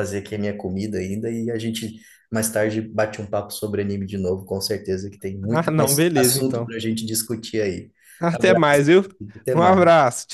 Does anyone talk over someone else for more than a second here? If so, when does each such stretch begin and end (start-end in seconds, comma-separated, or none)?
5.5-6.8